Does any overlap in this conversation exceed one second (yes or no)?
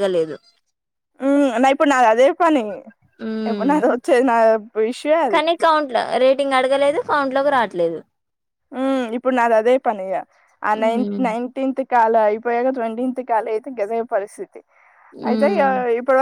no